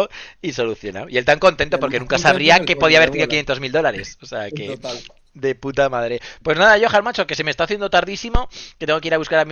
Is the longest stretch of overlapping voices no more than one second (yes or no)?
no